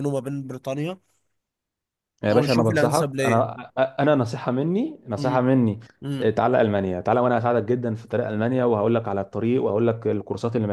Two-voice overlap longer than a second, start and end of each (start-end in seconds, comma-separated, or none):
2.3-3.5